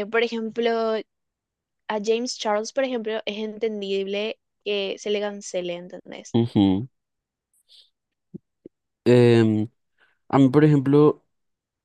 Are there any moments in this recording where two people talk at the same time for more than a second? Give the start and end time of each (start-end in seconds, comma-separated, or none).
none